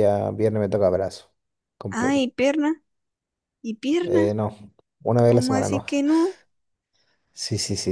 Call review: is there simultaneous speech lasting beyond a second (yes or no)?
no